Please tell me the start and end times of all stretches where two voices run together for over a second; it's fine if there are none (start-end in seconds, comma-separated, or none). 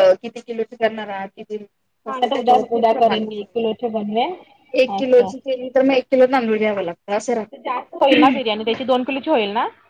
2.1-4.3